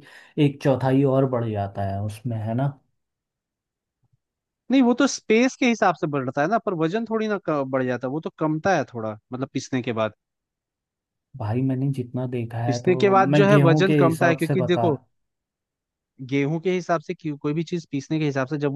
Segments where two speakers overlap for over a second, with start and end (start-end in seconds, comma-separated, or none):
12.7-15.0